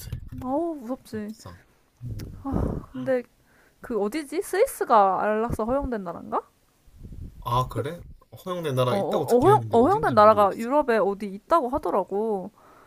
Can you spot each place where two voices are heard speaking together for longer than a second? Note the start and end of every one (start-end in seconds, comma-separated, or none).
8.9-10.7